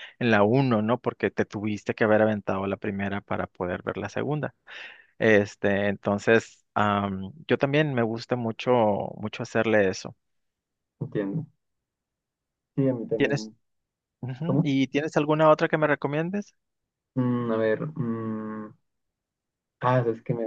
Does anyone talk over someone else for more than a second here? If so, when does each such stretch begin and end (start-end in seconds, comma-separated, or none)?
none